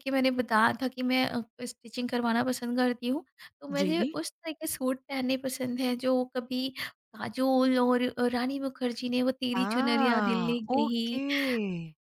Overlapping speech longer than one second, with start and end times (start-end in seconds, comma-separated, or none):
9.5-11.2